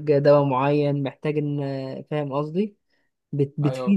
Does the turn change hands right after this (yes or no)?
no